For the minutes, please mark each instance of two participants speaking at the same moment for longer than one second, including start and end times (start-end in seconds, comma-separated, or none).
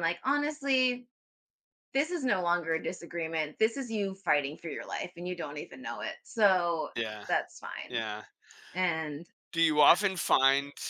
none